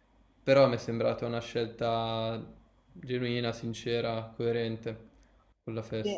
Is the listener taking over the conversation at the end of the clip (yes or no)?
yes